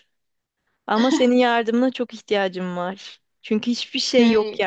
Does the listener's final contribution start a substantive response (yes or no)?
no